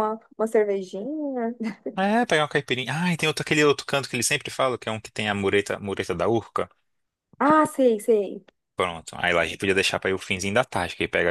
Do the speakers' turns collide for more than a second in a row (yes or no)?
no